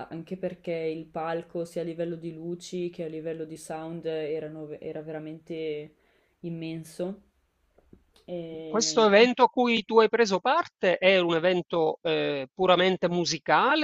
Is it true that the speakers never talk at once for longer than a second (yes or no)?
yes